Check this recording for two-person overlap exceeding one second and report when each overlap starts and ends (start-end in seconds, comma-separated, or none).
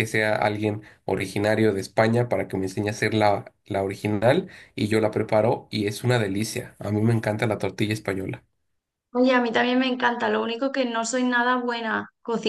none